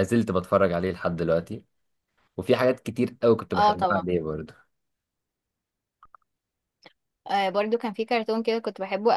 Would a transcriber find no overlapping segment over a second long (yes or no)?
yes